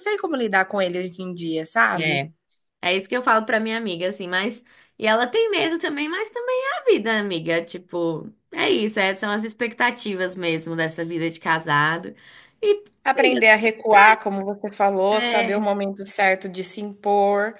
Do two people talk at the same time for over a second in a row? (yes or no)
no